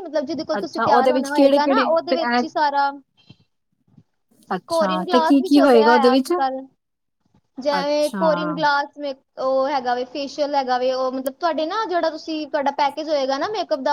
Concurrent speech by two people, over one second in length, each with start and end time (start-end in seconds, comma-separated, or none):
0.6-2.4, 4.7-6.3